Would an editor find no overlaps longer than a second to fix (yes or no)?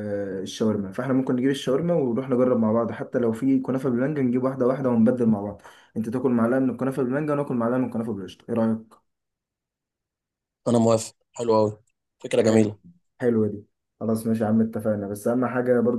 yes